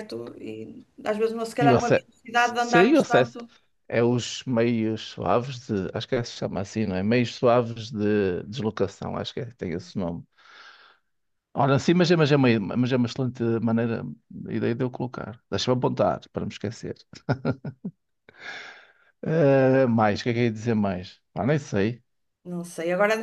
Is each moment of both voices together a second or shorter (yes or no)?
no